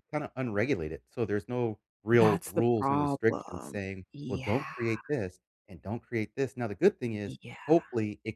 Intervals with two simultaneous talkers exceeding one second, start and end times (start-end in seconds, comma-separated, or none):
2.2-4.7